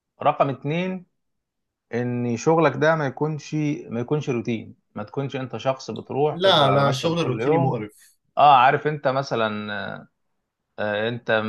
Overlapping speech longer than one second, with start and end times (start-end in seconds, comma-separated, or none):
6.3-7.8